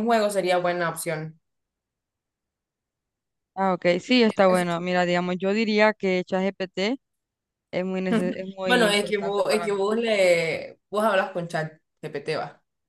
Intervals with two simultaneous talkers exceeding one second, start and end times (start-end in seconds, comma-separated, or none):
8.6-9.9